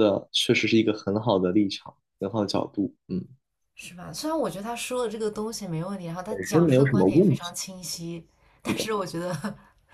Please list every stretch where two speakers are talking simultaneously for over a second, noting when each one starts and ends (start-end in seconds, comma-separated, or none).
6.3-7.5